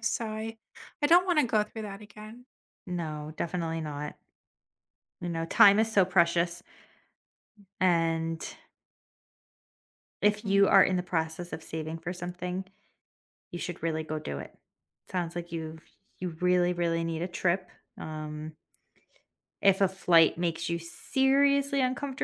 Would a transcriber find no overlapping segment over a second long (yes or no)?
yes